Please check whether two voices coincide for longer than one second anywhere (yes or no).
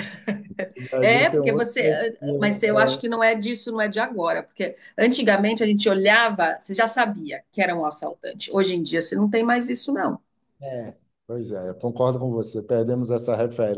yes